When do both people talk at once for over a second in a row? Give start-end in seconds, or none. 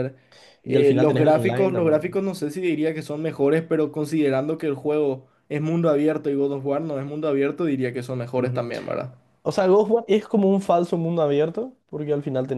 0.6-2.0